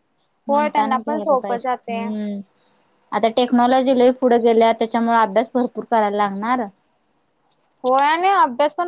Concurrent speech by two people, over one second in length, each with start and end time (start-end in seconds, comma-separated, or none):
0.5-2.0